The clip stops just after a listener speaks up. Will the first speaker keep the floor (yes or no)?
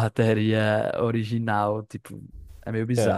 no